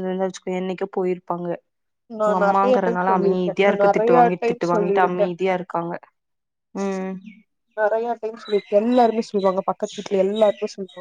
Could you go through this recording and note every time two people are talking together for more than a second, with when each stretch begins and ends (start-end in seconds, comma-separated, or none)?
2.3-5.3